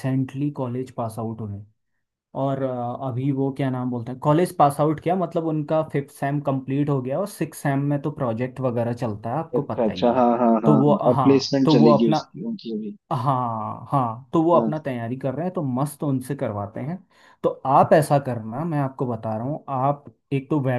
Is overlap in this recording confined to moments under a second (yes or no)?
no